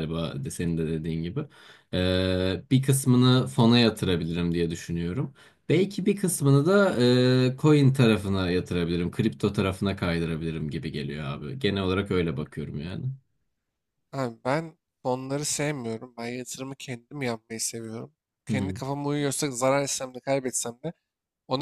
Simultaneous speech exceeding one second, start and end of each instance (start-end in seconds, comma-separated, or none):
none